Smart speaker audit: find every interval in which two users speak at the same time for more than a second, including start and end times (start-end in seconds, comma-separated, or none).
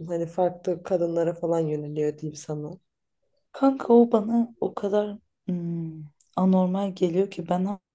none